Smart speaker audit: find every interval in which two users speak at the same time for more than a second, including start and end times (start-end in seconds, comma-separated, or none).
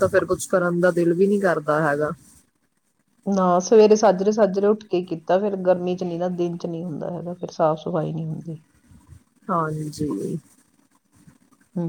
none